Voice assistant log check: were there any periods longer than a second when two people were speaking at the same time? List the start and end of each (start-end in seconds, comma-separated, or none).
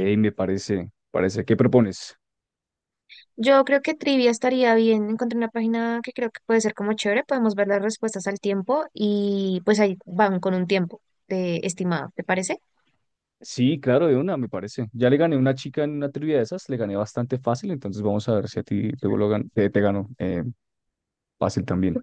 none